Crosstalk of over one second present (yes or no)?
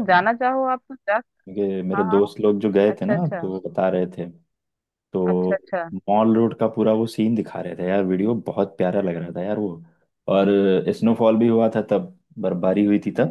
no